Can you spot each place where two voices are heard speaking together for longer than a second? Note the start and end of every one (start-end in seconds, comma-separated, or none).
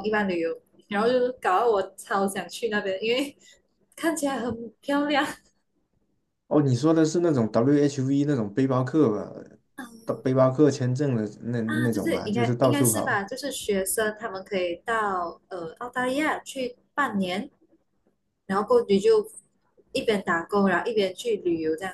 11.7-13.2